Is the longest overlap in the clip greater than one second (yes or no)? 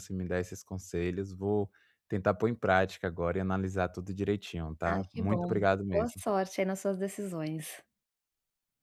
yes